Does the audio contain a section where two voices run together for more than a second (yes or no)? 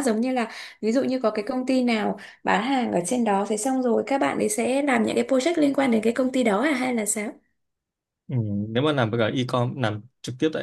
no